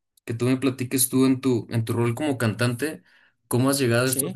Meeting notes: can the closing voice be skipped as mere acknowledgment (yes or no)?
yes